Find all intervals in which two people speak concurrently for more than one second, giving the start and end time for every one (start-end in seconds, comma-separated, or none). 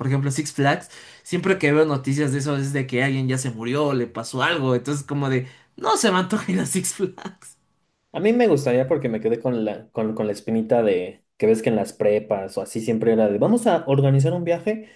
none